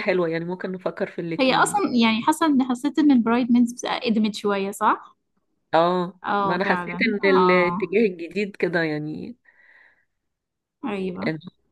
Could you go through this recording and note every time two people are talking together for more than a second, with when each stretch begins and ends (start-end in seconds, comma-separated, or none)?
6.2-7.9